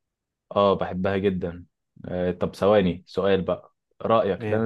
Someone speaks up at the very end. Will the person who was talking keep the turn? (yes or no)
yes